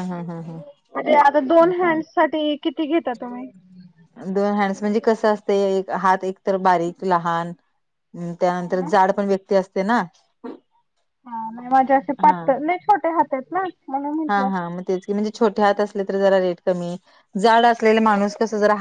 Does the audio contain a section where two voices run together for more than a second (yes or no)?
no